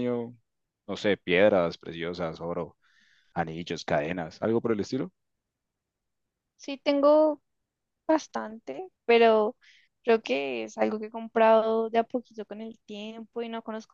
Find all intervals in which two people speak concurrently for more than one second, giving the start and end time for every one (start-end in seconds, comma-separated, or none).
none